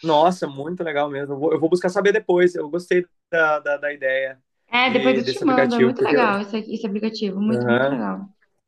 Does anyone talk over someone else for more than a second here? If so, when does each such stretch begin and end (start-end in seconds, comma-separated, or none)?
4.9-6.2